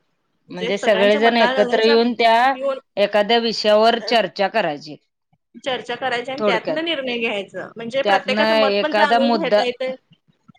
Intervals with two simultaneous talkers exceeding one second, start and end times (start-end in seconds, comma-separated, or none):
0.6-2.0, 8.0-9.6